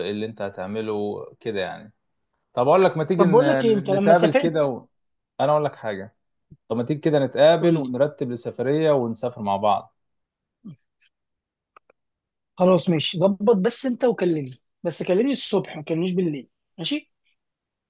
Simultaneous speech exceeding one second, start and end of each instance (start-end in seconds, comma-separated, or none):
3.2-4.7